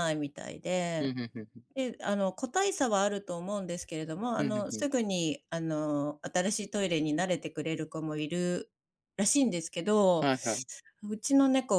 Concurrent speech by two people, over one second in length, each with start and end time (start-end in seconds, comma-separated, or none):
none